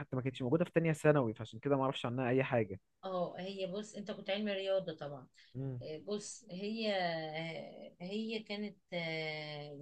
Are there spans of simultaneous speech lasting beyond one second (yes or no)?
no